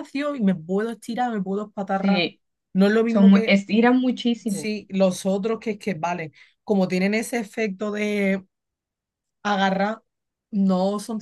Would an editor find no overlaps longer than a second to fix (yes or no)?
yes